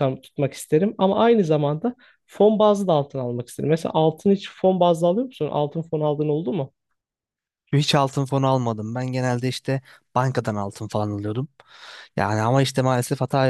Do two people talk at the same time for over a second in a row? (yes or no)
no